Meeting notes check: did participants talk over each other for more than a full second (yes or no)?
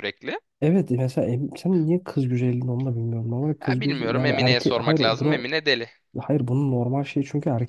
yes